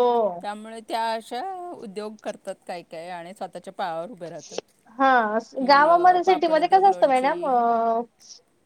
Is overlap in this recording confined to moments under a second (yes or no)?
no